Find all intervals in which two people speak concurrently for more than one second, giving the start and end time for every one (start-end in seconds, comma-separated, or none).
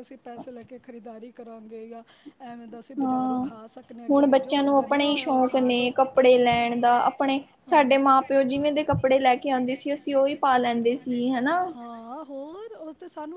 4.1-5.9